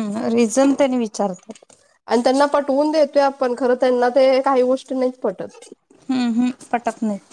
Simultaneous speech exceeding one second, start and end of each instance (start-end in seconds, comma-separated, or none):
none